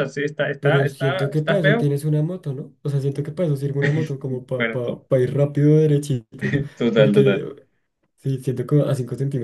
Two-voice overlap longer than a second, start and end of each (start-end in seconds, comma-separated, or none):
0.6-1.9